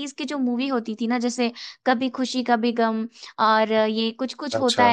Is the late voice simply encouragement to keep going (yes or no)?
yes